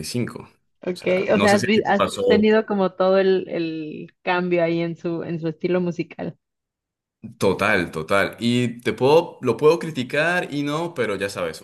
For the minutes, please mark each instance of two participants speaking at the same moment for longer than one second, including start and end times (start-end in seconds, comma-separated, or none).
0.8-2.5